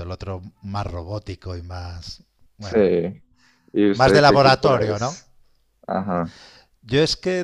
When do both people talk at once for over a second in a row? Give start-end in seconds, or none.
3.9-5.2